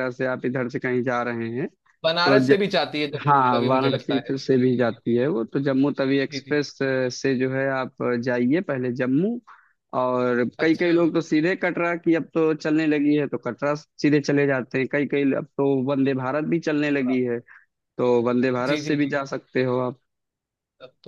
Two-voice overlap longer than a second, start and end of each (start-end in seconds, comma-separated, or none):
3.3-5.2